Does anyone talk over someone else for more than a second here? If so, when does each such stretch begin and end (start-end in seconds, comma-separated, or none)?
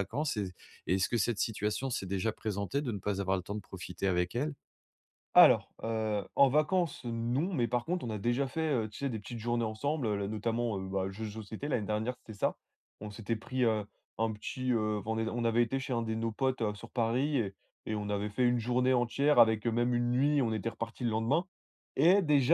none